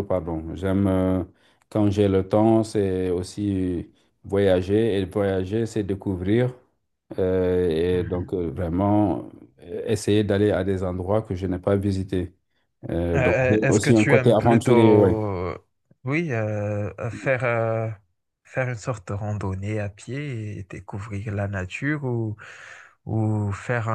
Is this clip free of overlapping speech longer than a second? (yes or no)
no